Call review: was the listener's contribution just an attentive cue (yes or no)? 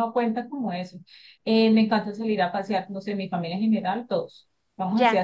yes